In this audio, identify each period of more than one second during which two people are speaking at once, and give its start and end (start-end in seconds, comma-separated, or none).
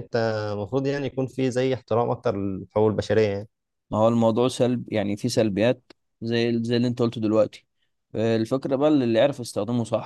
none